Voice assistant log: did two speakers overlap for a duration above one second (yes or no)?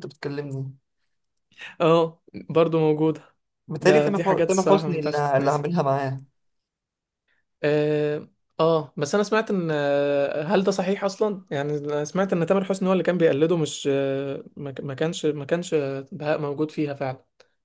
yes